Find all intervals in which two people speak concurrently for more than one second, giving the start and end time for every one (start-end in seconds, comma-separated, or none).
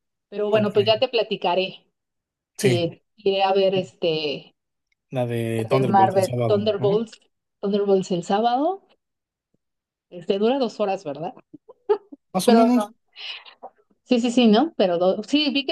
5.6-7.1